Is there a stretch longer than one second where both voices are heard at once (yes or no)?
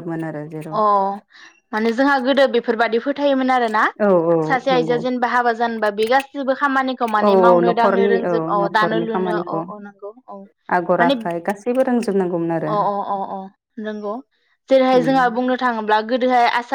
yes